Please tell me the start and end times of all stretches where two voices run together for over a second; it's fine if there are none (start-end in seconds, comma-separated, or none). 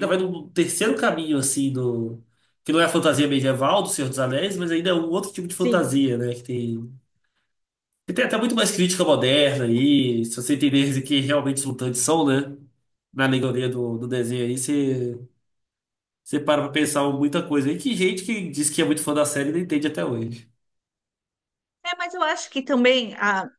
none